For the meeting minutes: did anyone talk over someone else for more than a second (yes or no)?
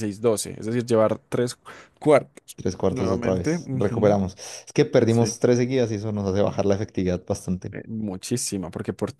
yes